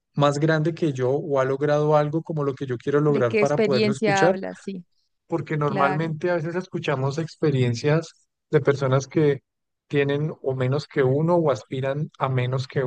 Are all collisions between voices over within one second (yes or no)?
no